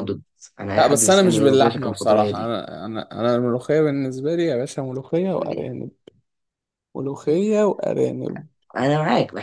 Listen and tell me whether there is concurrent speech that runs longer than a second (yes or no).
yes